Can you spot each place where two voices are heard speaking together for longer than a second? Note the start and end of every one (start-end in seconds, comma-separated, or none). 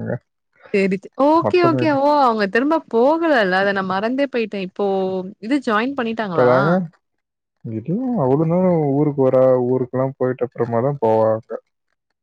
none